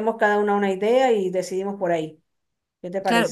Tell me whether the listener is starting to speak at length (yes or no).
yes